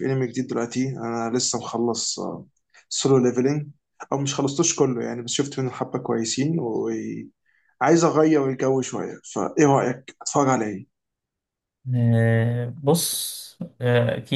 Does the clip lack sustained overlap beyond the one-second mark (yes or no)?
yes